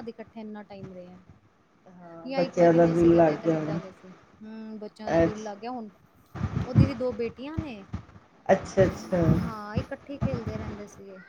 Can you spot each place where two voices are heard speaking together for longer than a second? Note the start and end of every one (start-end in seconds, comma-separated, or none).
2.3-3.8